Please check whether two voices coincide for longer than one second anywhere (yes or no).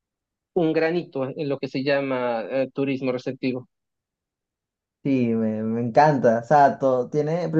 no